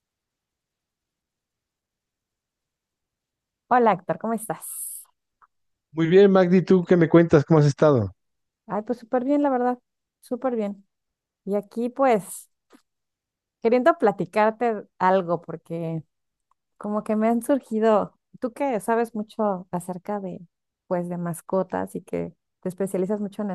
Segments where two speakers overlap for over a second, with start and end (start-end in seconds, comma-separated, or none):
none